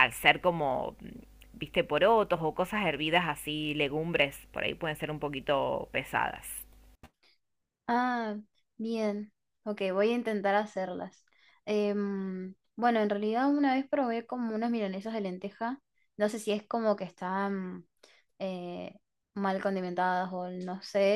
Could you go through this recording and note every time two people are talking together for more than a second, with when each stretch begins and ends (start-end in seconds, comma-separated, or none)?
none